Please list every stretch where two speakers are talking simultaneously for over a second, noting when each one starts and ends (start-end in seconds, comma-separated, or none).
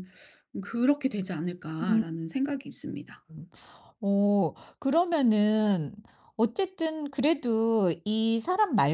none